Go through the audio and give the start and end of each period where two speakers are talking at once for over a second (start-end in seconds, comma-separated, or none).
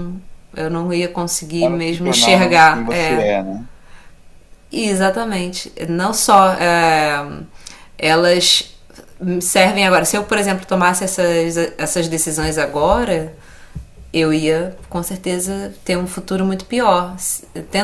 1.6-3.3